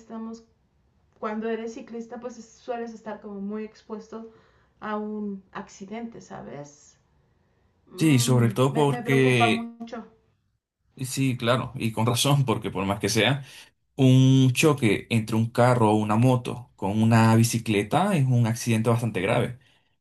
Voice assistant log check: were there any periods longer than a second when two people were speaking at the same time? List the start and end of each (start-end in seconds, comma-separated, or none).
8.0-9.7